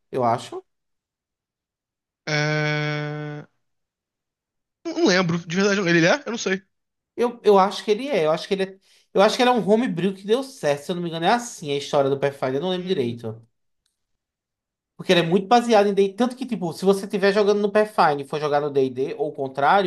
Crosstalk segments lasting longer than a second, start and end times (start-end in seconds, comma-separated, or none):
none